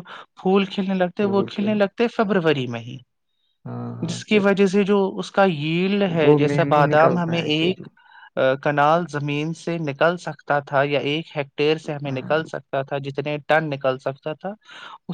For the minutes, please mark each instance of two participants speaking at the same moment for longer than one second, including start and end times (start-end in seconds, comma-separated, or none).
6.2-7.8